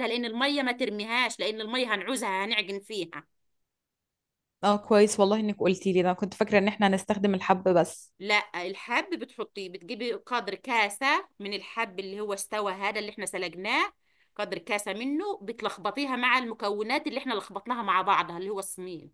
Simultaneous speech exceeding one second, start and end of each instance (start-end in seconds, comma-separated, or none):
none